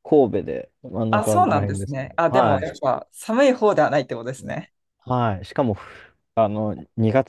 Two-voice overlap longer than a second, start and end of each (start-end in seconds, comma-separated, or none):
1.1-2.7